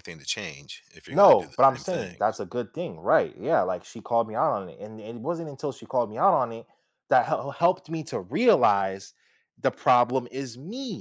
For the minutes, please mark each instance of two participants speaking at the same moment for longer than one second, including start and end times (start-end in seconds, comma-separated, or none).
1.1-2.4